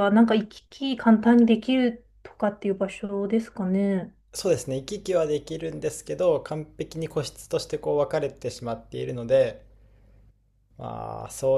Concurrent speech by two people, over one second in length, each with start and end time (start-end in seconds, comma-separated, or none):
none